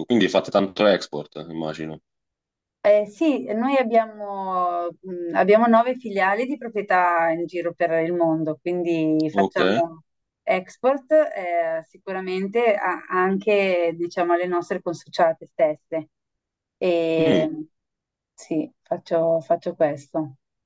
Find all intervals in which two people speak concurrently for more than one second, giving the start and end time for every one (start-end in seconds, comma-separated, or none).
none